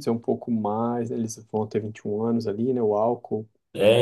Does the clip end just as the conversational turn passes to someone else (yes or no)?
yes